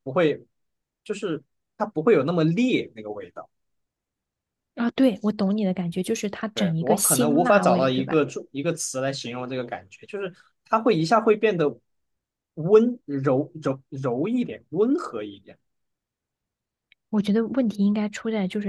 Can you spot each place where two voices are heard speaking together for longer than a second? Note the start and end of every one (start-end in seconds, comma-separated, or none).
6.5-8.2